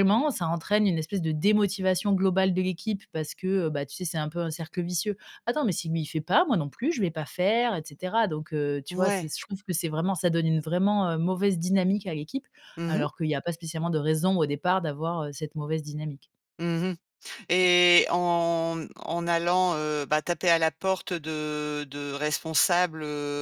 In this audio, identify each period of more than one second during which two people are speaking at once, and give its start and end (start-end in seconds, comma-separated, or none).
none